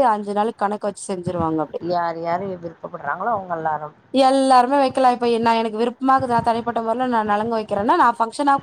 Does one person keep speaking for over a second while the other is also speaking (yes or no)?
no